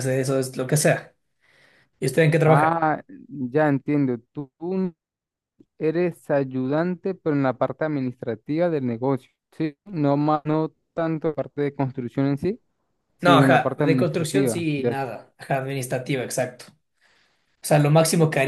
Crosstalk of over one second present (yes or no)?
yes